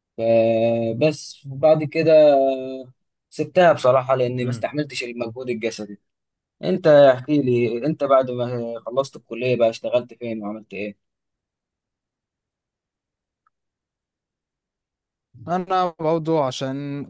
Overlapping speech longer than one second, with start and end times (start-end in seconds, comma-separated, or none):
none